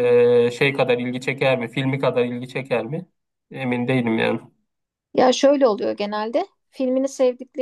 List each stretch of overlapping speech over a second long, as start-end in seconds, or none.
none